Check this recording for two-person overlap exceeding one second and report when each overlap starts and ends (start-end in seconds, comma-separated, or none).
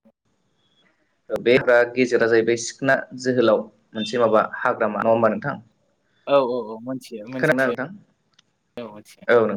none